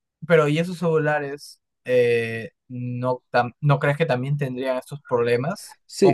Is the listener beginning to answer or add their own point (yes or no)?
yes